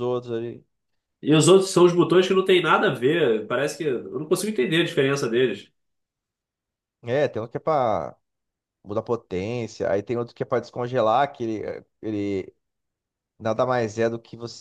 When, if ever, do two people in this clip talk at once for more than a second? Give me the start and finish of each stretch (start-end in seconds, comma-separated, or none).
none